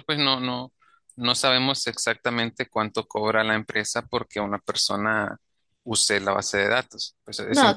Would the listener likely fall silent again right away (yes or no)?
no